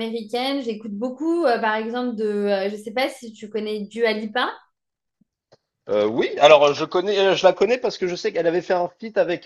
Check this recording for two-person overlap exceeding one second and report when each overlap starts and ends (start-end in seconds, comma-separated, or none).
none